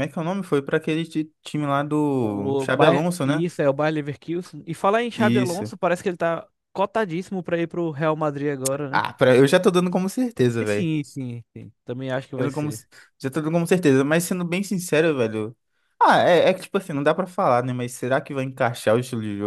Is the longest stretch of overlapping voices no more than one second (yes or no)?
no